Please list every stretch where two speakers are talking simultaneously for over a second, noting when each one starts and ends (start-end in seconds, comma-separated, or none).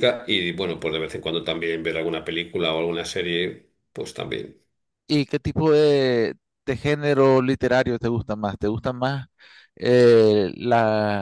none